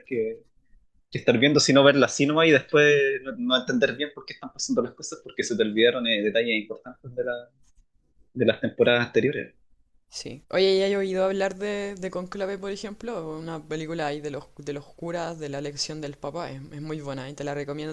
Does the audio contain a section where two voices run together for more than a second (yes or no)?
no